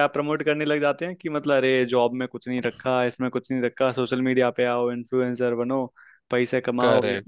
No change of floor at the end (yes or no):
yes